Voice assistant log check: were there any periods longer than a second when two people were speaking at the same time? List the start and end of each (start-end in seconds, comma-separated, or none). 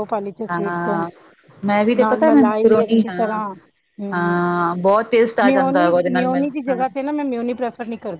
2.0-3.4, 5.4-6.8